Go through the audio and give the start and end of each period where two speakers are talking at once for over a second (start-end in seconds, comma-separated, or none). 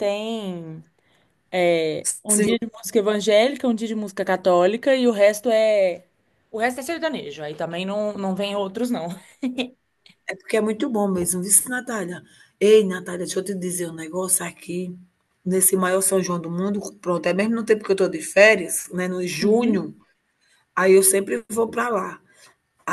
none